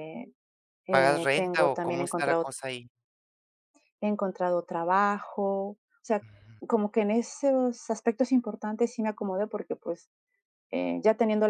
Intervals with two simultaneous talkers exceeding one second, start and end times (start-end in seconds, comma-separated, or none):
0.9-2.5